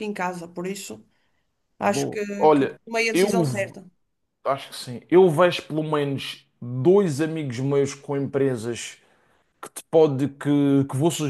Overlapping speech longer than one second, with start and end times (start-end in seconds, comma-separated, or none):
1.8-3.7